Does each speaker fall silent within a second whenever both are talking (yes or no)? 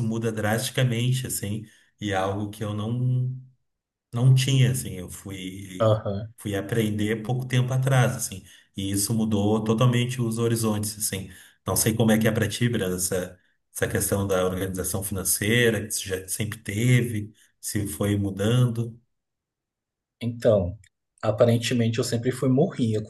yes